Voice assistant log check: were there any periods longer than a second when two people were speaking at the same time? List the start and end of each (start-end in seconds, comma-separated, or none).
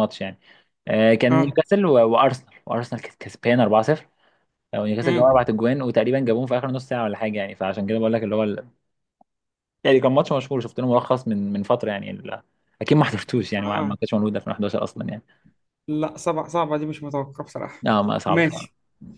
none